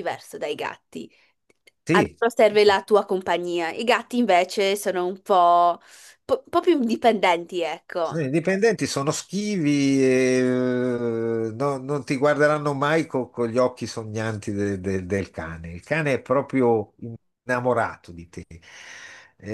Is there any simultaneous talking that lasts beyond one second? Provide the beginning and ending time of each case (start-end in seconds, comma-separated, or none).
none